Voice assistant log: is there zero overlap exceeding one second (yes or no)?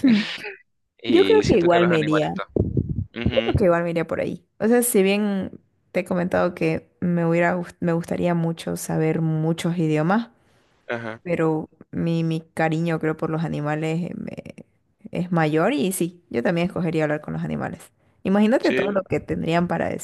no